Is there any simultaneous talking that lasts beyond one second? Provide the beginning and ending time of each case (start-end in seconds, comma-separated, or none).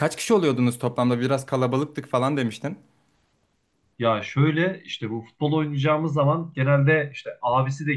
none